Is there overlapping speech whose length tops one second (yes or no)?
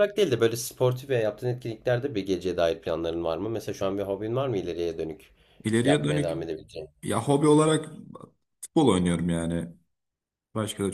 no